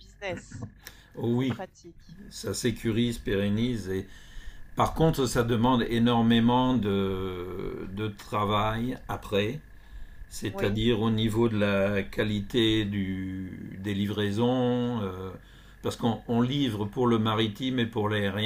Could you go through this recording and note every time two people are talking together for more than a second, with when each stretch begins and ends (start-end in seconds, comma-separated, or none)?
none